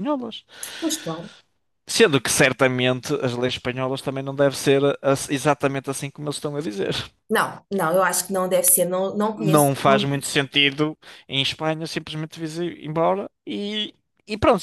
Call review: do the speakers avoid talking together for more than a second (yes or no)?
yes